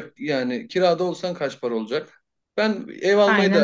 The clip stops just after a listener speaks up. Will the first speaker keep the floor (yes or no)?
yes